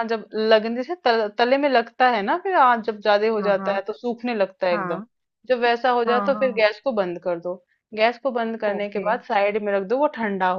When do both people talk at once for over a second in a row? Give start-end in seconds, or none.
none